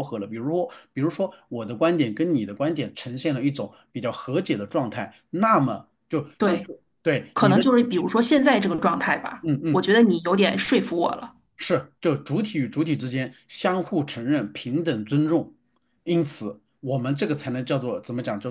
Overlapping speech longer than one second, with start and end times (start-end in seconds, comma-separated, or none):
none